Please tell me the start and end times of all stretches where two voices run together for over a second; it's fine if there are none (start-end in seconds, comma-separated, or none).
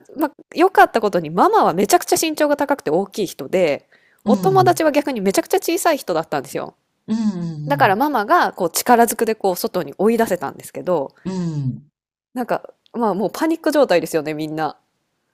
none